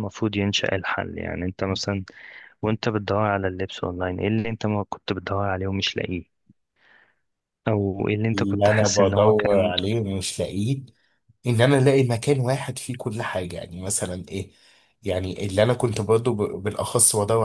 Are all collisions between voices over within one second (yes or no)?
no